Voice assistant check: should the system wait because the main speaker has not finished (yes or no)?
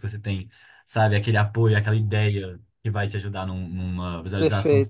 no